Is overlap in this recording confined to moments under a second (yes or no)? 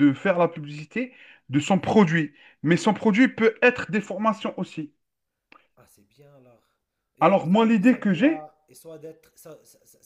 no